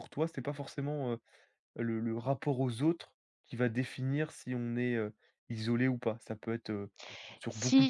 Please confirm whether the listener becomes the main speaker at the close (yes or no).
yes